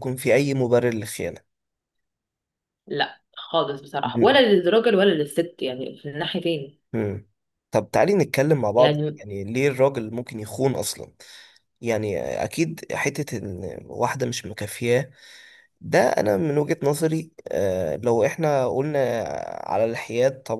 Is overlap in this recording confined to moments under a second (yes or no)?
yes